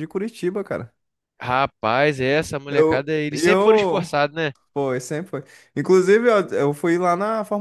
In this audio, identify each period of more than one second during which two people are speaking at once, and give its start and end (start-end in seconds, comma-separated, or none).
2.7-4.1